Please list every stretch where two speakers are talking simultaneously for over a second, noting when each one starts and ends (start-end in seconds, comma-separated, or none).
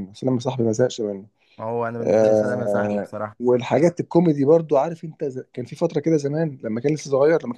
2.0-3.4